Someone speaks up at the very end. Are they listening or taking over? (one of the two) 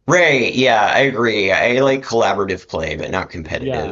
taking over